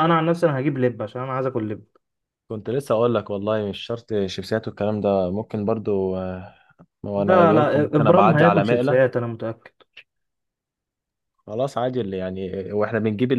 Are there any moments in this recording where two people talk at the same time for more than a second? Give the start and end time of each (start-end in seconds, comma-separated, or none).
7.2-9.1